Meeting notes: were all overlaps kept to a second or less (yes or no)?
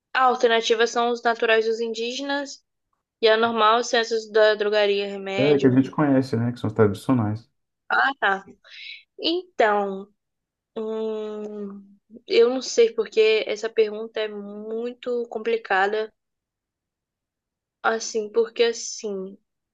yes